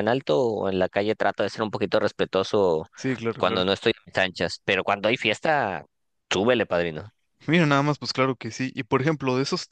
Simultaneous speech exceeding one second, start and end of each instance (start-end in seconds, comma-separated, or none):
none